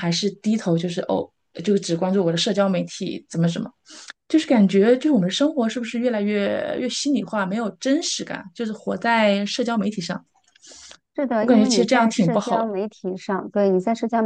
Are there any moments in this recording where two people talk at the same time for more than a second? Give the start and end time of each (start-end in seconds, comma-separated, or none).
11.4-12.7